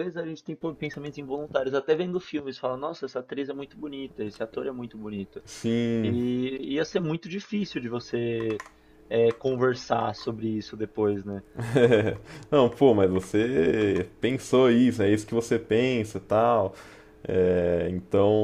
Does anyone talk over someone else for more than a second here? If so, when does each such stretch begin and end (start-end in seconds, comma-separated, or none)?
none